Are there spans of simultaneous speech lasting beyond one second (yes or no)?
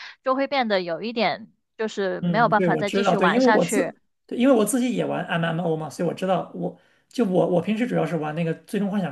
yes